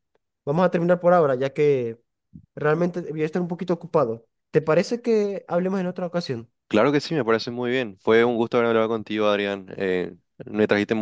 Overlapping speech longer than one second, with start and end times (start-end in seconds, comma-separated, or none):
none